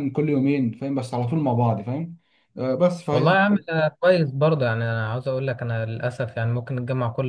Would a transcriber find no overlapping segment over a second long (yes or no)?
yes